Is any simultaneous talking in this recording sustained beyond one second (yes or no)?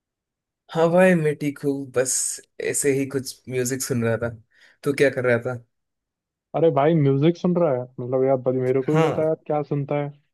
no